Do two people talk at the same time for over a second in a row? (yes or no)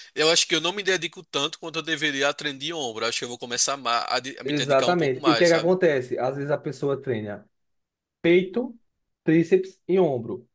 yes